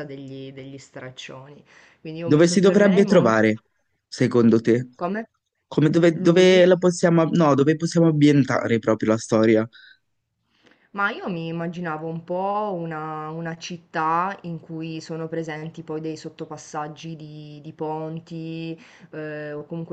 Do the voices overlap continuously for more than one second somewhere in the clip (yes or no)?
yes